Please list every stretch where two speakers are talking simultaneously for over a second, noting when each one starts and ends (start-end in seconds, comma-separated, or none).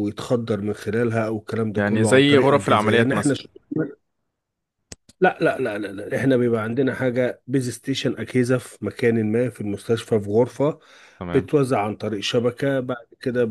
1.8-3.4